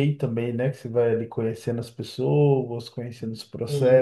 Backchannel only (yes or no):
yes